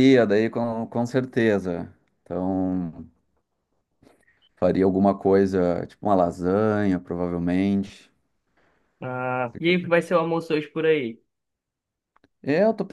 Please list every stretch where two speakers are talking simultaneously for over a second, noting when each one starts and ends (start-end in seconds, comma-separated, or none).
none